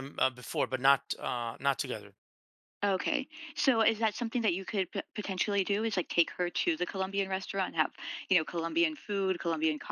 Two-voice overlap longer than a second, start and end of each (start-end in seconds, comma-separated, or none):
none